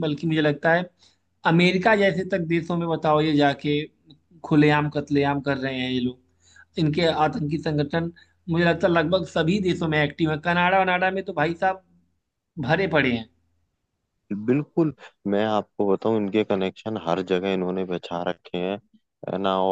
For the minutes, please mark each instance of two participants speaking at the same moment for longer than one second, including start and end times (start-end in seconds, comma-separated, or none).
none